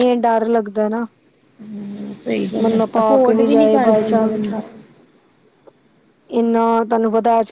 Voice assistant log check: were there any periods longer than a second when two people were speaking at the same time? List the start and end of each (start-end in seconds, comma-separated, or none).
2.6-4.4